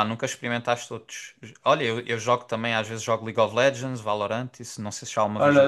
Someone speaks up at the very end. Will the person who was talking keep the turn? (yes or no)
no